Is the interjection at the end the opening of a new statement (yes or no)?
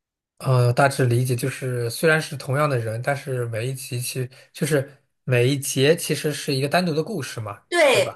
yes